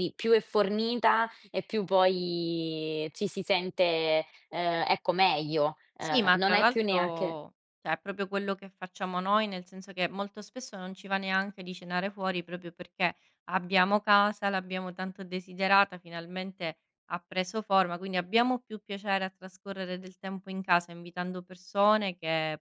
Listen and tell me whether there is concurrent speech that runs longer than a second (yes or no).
yes